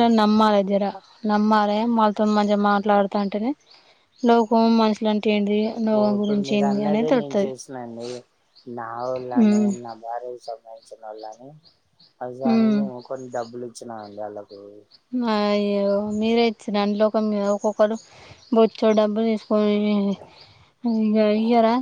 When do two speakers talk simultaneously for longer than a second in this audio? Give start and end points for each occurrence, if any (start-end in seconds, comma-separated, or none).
5.8-7.5